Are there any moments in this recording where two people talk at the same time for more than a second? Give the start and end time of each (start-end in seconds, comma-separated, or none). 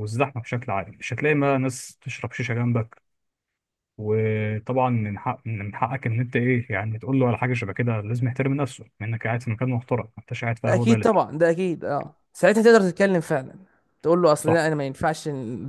none